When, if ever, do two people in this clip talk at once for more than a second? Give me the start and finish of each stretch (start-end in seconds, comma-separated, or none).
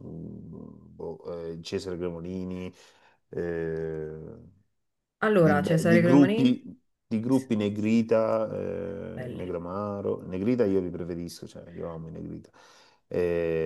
5.4-6.6